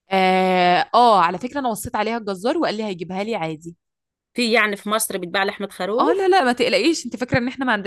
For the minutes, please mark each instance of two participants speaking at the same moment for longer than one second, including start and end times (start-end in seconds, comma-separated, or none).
none